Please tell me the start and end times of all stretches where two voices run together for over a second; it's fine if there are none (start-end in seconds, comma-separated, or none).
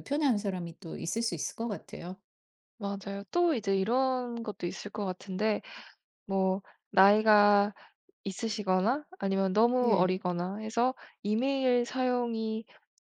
none